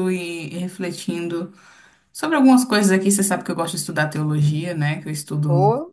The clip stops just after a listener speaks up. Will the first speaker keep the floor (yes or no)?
no